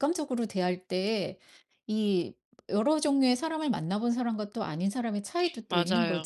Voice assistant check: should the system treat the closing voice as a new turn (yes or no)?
yes